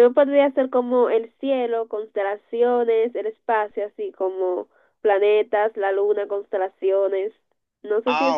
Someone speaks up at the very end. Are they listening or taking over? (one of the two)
taking over